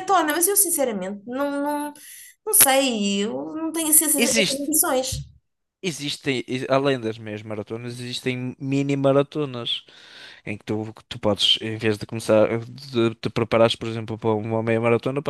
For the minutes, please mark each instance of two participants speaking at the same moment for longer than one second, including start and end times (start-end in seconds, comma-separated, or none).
none